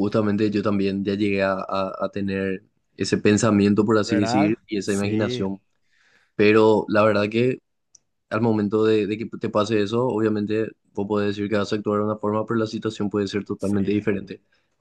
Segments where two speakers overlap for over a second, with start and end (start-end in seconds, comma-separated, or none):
4.0-5.5